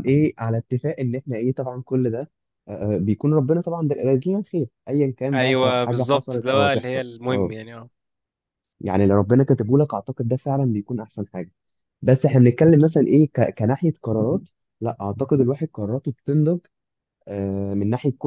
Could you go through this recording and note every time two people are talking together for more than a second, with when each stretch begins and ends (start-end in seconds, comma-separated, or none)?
5.3-7.5